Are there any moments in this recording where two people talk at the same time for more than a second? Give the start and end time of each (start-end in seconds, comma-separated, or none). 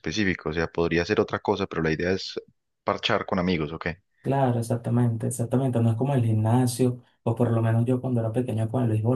none